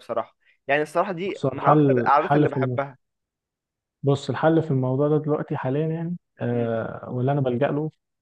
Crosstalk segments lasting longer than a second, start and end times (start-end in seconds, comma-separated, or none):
1.3-2.8